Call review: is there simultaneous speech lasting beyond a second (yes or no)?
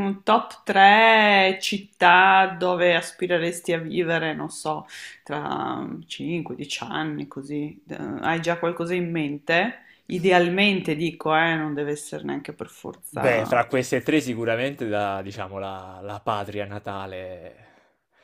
no